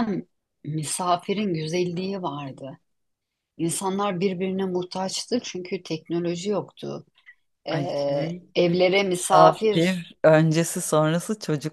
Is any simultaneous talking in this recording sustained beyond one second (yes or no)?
no